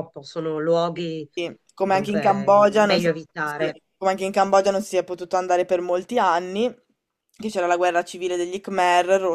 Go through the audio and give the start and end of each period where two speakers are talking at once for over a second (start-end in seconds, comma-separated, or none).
1.8-3.8